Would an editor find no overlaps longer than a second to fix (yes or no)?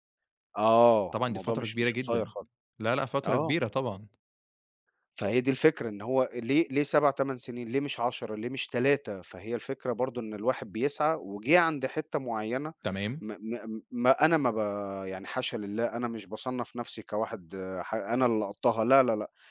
no